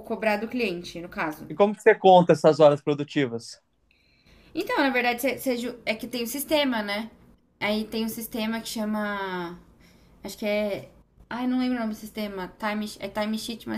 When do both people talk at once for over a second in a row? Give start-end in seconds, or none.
none